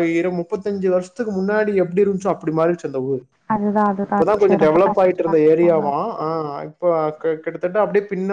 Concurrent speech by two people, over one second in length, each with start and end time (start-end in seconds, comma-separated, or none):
4.0-5.8